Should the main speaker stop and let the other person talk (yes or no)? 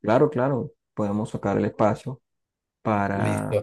no